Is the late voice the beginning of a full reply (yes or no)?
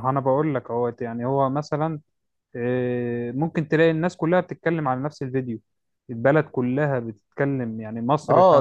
yes